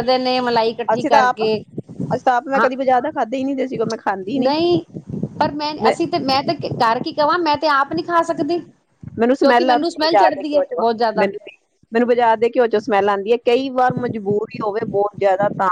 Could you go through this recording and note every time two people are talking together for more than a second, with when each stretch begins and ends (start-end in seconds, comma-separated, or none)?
9.2-11.3